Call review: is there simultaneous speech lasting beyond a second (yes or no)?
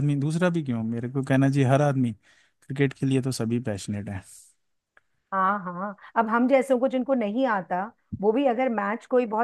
no